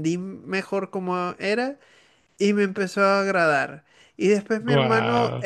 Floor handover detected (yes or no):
no